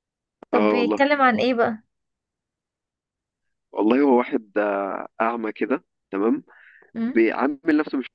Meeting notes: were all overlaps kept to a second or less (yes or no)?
yes